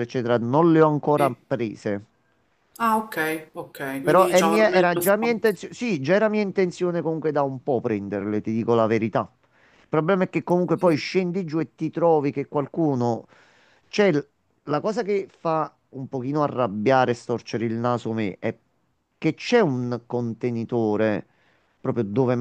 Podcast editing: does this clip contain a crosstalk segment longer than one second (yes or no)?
yes